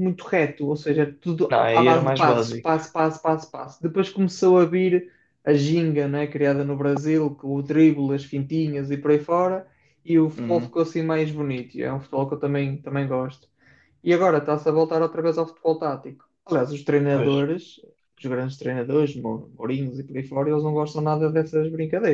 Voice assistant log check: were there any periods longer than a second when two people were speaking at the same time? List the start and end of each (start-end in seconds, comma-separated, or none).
1.5-2.7